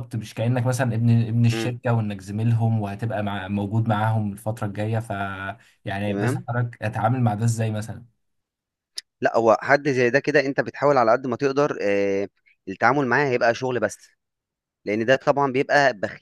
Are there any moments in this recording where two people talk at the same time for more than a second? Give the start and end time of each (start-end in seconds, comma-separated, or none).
none